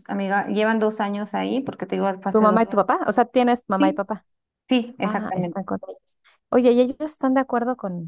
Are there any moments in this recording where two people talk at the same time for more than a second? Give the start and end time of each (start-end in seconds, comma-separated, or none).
none